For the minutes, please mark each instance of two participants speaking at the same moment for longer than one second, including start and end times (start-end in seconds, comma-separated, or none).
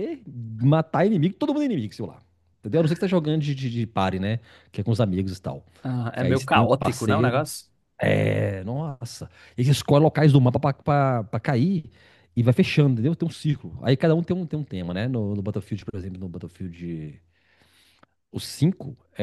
6.2-7.4